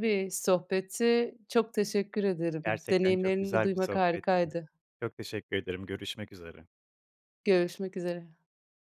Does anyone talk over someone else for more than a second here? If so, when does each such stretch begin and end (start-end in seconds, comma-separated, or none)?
2.6-4.5